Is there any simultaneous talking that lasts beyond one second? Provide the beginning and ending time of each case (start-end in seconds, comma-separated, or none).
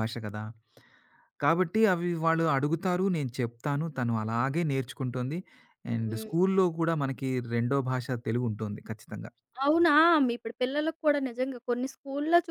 none